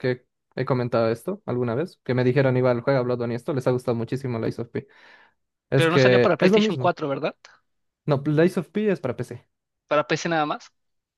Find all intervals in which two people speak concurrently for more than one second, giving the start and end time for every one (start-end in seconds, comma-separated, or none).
5.7-7.0